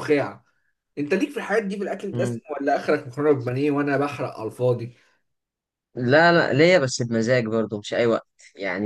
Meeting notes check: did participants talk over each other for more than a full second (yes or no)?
no